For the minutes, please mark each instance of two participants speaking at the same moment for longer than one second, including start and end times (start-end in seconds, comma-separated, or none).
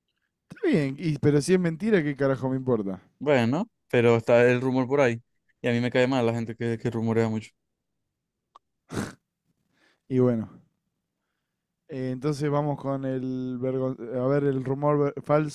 none